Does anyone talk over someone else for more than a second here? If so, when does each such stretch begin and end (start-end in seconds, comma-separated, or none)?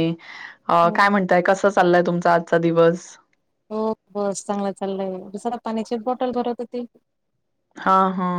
none